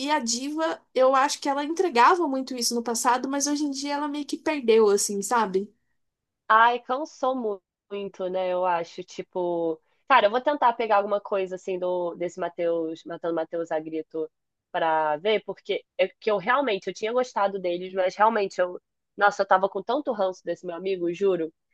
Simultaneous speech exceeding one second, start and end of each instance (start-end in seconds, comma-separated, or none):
none